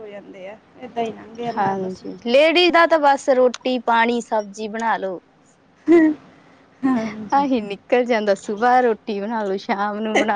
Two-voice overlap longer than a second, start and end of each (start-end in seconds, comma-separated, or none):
none